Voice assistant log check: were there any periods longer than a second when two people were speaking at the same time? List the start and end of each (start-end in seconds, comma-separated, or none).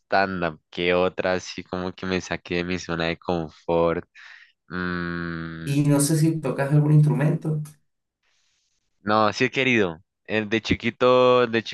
none